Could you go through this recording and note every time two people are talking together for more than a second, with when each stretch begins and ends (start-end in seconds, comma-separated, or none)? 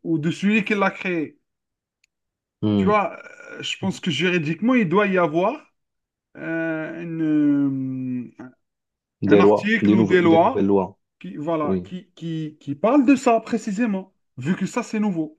9.3-10.7